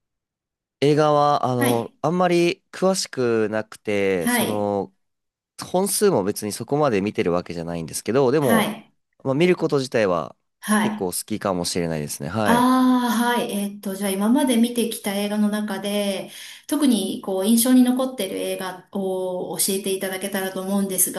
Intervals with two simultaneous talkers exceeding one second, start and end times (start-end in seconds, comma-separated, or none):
none